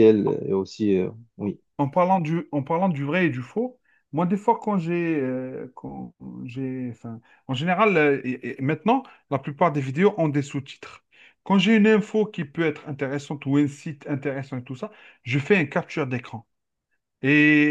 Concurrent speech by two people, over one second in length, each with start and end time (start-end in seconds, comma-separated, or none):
none